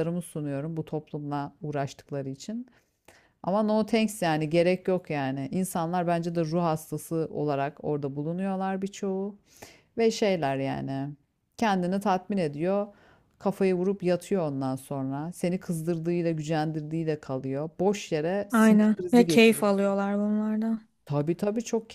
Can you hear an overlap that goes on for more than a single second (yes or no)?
yes